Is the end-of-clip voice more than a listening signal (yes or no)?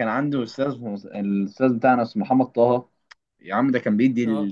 no